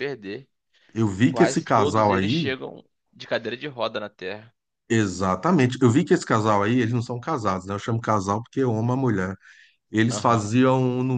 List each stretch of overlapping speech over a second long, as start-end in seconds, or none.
1.3-2.5